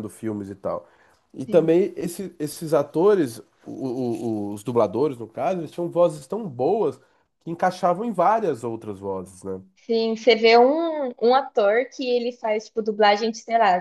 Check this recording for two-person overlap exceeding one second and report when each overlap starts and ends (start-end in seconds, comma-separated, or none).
none